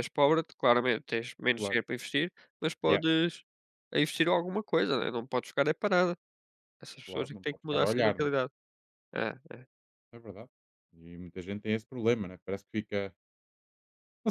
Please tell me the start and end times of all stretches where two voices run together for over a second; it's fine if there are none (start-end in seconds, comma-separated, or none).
7.0-8.3